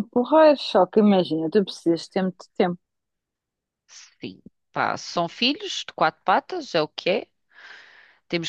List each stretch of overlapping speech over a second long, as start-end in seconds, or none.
none